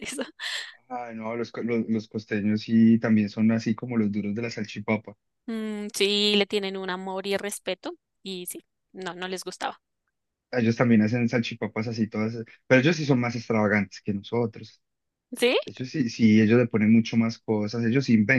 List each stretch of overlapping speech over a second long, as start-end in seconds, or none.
none